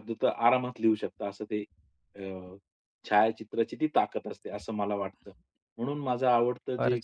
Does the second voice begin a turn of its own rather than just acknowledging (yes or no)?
no